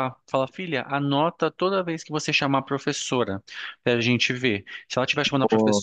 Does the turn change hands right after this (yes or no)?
no